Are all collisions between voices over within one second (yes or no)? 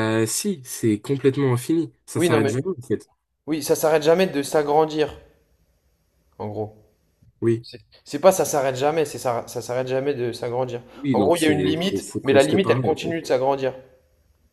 no